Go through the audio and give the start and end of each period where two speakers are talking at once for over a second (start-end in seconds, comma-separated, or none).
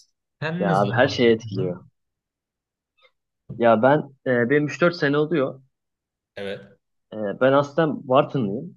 0.6-1.9